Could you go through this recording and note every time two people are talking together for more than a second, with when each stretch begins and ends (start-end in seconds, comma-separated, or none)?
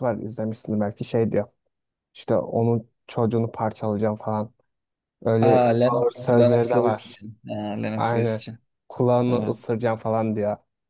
5.4-7.2